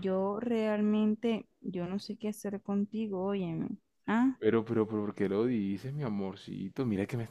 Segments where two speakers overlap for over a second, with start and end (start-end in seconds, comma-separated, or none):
none